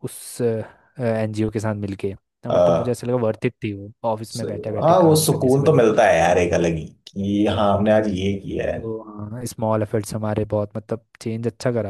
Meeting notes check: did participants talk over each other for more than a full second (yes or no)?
yes